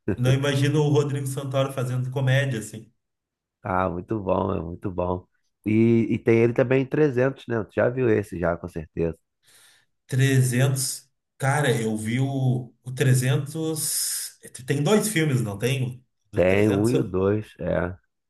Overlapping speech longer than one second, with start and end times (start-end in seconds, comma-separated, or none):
none